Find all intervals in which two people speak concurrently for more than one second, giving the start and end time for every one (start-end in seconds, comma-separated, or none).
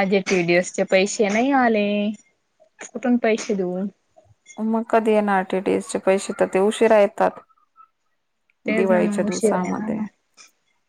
8.8-10.0